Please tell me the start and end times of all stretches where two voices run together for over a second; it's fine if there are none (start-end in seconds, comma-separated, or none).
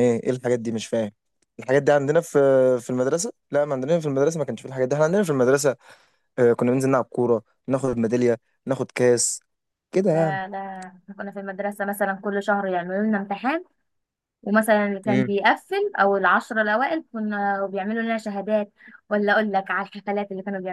none